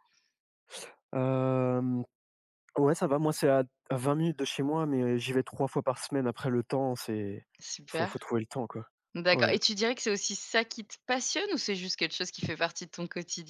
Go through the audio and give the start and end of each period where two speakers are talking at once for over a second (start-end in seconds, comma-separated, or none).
none